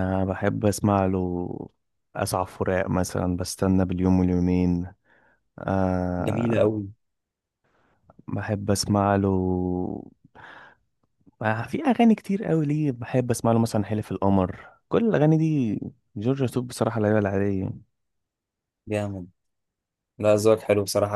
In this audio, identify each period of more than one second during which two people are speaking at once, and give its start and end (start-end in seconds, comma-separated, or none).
none